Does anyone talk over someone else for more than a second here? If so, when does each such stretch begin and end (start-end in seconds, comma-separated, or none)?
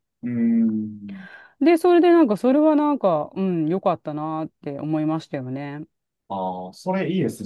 none